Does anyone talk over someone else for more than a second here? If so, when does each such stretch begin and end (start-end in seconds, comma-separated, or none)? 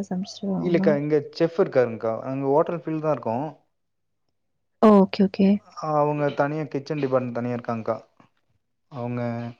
none